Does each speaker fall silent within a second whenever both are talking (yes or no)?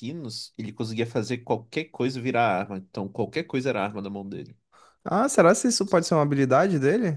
yes